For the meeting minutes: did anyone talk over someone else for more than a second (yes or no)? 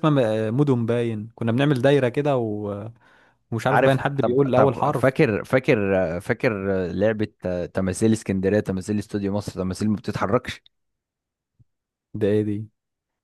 yes